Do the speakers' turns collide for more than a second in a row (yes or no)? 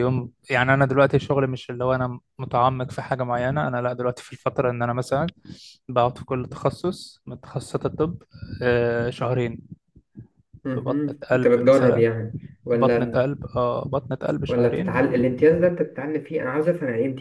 yes